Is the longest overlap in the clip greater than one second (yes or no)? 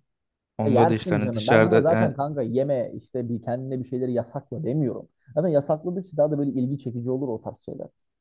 yes